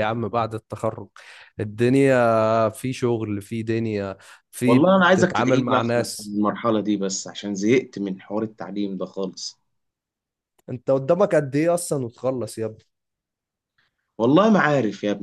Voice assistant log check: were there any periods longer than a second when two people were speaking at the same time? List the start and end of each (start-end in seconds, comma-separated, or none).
4.7-6.3